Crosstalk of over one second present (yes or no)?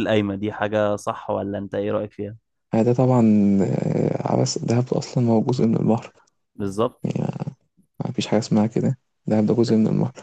no